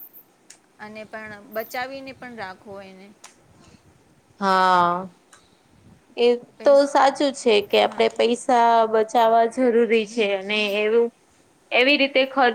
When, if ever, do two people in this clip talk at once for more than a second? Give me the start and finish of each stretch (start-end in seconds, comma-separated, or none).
none